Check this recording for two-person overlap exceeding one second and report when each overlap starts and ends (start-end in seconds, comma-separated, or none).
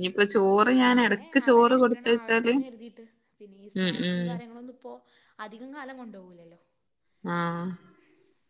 0.8-2.5